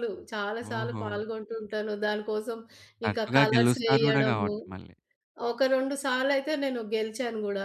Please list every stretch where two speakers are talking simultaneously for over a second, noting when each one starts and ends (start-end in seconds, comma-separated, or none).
3.1-4.5